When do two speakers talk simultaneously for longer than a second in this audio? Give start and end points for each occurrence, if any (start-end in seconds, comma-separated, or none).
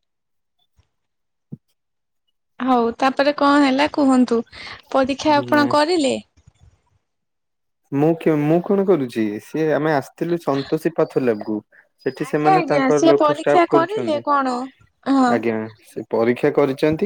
12.3-14.2